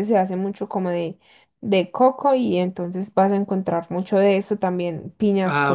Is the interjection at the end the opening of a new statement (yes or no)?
no